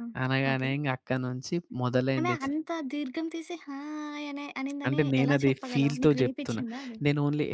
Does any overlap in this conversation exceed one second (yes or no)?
yes